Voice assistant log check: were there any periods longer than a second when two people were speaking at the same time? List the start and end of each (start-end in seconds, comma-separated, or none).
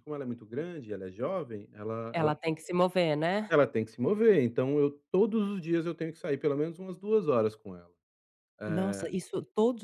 none